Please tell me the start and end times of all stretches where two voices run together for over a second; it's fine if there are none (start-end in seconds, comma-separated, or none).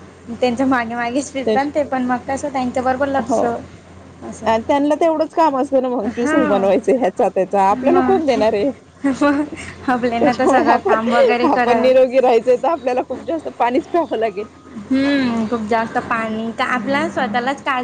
10.2-11.9